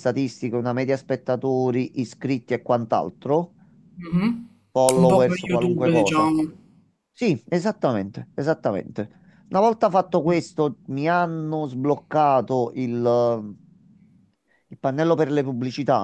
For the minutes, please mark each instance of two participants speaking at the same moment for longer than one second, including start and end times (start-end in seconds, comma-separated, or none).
5.0-6.3